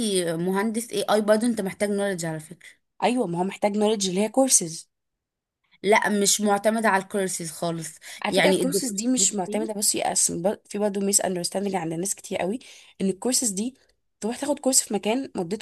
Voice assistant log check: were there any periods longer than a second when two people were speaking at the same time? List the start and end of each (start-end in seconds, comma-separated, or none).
8.2-9.7